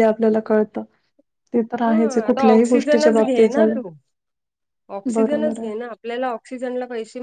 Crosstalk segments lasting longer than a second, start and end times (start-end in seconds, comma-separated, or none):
1.8-3.8